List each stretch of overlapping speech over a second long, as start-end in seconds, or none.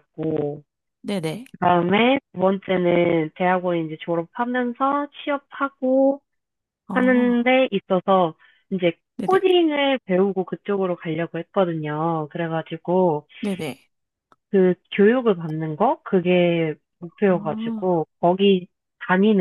none